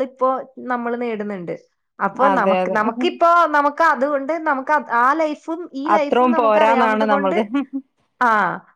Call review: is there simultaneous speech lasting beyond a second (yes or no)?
yes